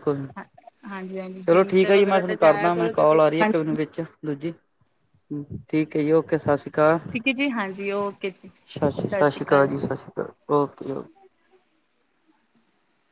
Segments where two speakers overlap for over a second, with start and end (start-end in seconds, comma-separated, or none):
1.5-3.2